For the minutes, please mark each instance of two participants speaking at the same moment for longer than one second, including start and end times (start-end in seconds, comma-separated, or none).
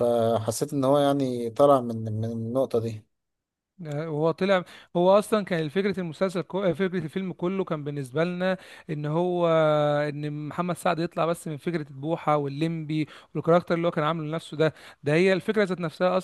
none